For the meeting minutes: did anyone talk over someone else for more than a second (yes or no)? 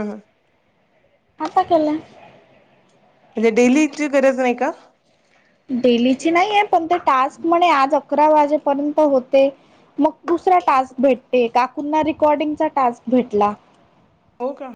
no